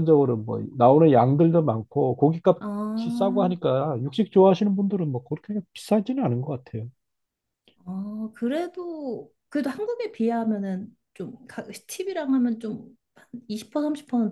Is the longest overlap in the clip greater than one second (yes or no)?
no